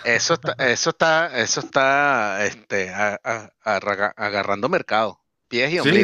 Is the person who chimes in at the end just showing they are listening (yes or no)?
no